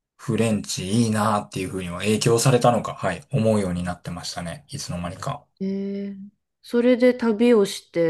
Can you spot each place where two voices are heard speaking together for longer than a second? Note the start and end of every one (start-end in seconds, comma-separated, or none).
none